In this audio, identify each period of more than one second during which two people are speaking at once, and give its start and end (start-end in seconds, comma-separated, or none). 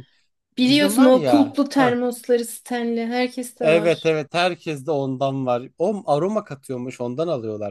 0.6-1.9